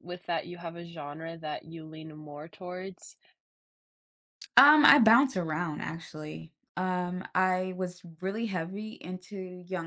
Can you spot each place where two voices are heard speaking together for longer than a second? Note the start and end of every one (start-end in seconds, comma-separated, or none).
none